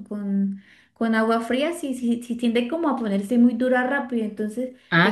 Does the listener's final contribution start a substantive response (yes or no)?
no